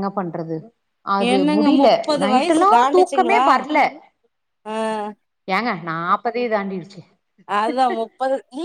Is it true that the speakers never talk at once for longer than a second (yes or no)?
no